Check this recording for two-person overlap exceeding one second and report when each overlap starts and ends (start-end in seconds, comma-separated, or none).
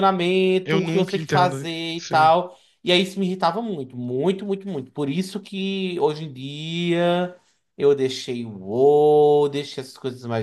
0.6-2.3